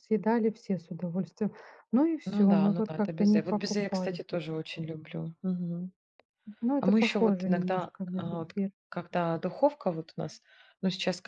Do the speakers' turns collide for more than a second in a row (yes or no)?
yes